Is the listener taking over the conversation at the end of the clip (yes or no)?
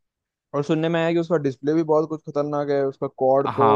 yes